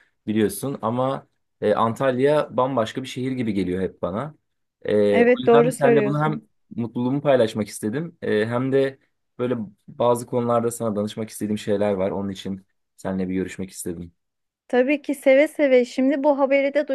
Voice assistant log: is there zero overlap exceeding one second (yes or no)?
no